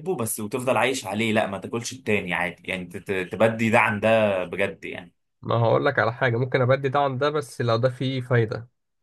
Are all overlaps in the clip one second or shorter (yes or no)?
yes